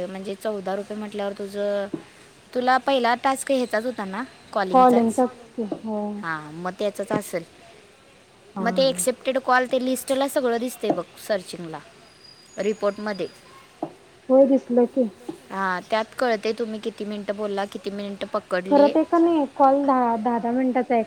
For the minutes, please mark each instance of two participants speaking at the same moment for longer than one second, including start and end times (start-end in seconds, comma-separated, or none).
none